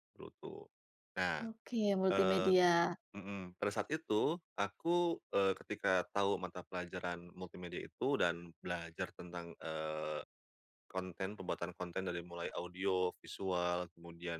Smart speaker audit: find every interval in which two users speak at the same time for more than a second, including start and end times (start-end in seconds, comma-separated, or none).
none